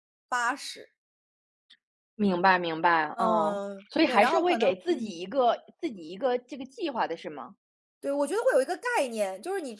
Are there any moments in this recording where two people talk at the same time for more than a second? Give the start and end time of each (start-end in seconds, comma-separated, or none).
3.1-5.2